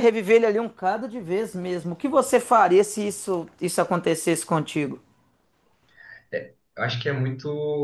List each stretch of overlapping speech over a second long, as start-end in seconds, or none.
none